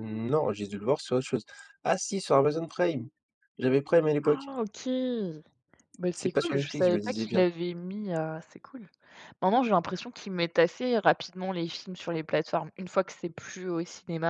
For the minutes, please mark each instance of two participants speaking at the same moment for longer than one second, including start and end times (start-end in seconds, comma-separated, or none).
6.1-7.4